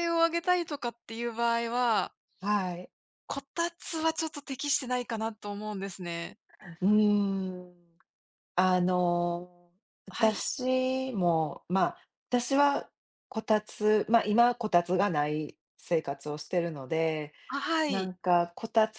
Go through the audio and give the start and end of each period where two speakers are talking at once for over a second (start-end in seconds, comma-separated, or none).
none